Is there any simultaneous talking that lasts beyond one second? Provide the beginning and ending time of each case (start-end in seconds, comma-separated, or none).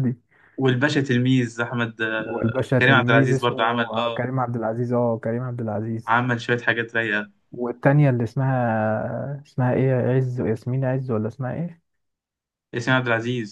2.2-4.3